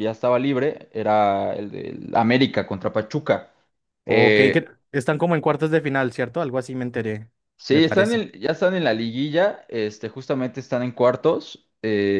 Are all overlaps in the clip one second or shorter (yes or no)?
yes